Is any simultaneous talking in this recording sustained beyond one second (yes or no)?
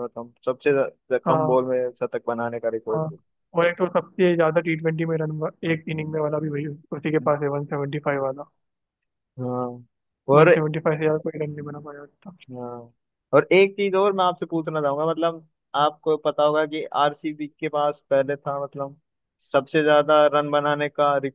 no